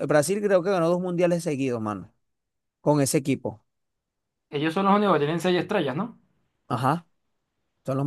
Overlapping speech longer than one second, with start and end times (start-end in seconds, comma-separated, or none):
none